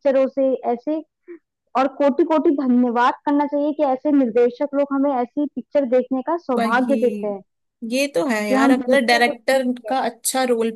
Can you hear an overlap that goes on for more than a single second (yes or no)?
yes